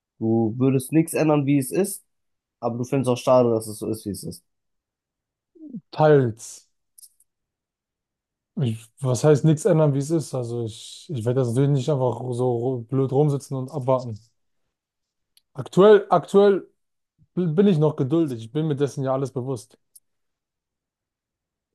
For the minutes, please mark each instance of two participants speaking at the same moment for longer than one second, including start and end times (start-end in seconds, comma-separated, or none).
none